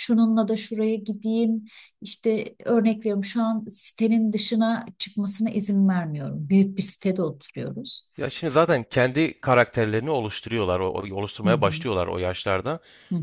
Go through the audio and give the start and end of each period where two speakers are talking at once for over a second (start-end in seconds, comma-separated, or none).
none